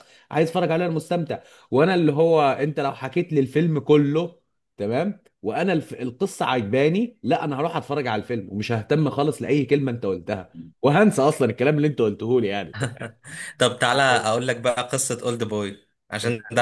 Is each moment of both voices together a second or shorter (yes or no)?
yes